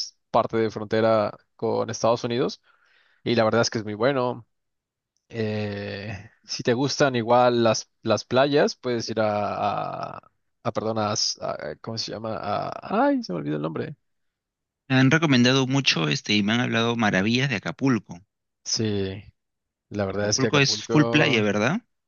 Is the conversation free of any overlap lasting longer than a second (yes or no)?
no